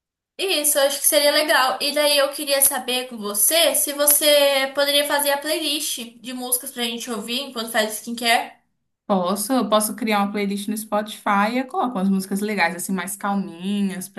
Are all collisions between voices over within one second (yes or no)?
yes